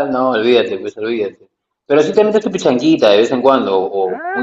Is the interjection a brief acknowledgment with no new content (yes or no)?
no